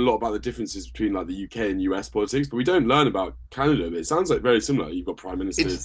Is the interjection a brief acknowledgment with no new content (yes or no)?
no